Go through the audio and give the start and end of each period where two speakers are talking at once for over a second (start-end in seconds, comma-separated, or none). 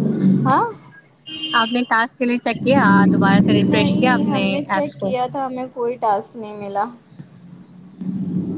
3.7-5.1